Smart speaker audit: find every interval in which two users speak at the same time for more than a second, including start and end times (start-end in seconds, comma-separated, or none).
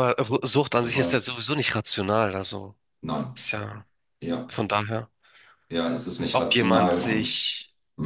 6.3-7.5